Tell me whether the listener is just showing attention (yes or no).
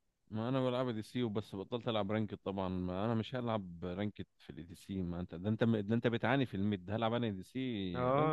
no